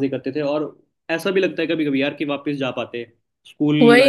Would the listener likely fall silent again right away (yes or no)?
no